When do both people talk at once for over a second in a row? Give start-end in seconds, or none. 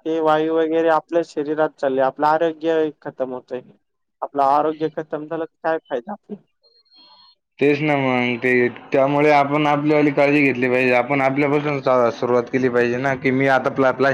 none